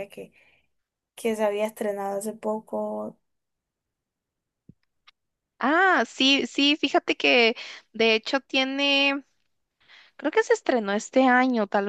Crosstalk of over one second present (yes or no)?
no